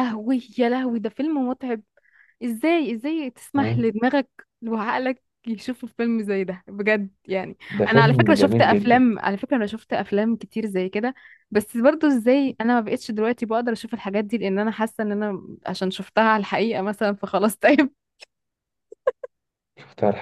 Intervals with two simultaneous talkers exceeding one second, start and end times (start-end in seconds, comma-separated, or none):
7.7-9.1